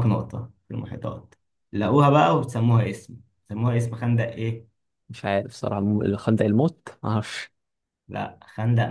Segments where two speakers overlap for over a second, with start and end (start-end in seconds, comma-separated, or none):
none